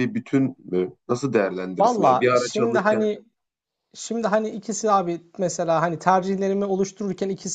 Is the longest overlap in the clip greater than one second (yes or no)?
yes